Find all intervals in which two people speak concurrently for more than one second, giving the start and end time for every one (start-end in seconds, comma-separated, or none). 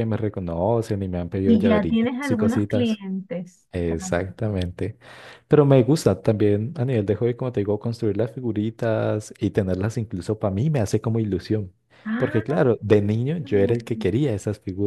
1.4-3.0